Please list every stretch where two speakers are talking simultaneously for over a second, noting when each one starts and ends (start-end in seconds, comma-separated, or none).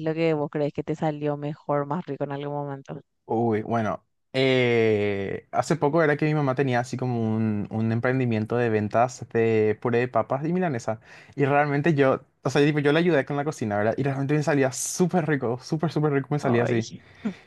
none